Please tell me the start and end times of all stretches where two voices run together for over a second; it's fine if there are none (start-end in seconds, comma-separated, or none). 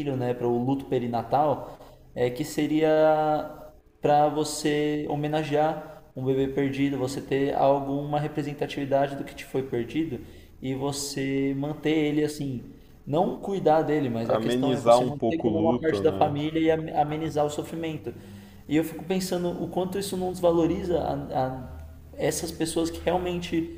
14.2-16.4